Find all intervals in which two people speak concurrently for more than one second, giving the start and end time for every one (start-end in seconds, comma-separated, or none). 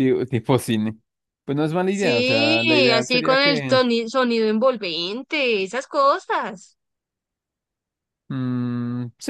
1.9-3.8